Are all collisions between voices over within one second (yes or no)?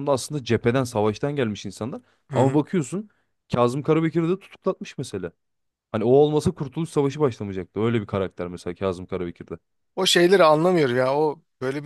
yes